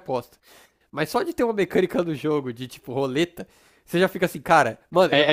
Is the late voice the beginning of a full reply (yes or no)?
yes